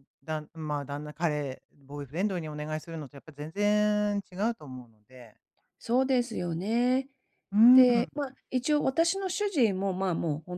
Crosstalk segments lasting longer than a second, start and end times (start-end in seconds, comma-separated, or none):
none